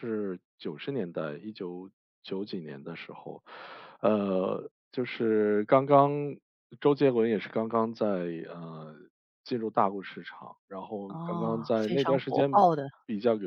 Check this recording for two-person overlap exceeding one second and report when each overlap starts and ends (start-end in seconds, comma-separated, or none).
11.1-12.7